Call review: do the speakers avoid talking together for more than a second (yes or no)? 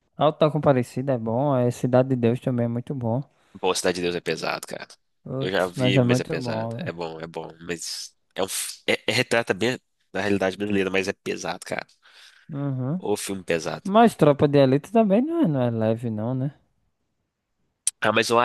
no